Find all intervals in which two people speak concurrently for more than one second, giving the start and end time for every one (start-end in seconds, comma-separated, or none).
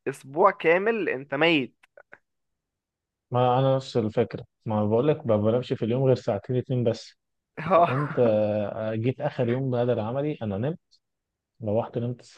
none